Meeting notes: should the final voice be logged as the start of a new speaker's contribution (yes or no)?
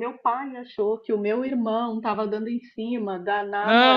yes